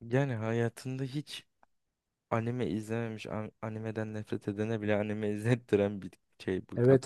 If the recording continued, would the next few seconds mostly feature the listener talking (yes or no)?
yes